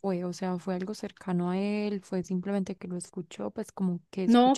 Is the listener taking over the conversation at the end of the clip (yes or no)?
yes